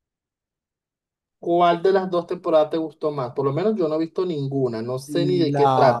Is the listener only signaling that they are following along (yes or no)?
yes